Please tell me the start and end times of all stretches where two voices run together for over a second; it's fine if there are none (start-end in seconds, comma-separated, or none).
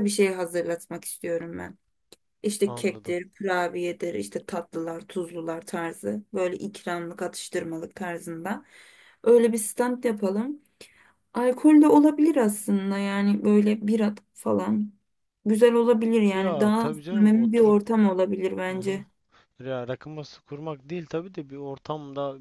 16.3-17.8